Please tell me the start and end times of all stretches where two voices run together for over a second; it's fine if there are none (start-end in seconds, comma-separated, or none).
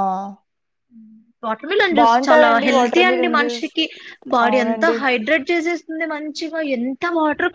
2.0-3.7